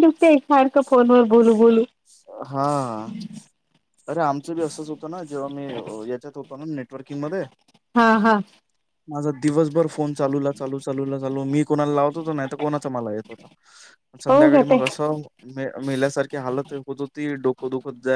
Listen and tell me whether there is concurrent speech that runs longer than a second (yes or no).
no